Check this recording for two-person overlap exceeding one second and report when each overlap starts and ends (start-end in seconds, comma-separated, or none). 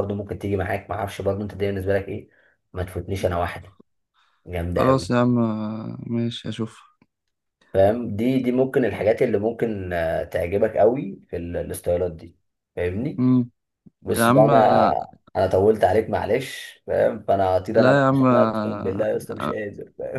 17.7-19.1